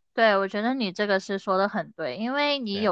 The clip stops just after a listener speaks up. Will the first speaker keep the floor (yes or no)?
yes